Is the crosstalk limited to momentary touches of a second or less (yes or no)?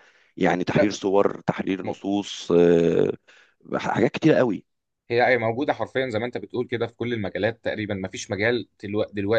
yes